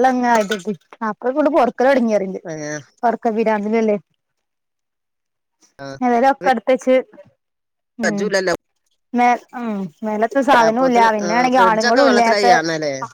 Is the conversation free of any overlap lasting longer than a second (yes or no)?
no